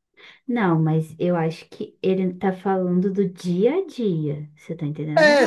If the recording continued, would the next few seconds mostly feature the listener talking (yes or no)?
yes